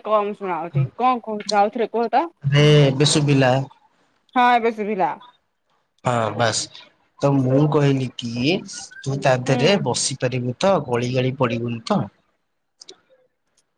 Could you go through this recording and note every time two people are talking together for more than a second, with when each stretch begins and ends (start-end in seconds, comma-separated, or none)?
none